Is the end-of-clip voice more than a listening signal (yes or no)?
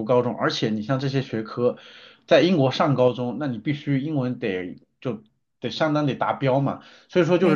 no